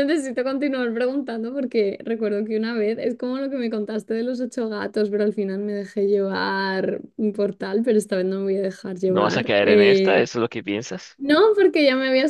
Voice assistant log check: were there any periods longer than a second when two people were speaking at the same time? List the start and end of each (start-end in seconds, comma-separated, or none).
9.1-10.3